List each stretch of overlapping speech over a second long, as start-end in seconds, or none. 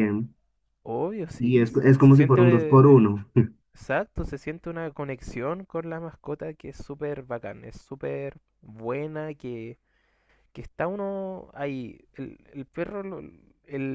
1.4-2.9